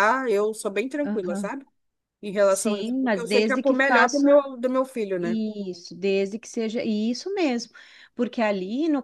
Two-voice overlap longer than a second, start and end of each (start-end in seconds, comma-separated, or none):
2.5-4.3